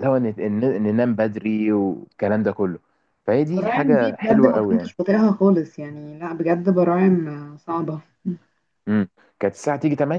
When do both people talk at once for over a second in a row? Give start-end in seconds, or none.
3.5-4.9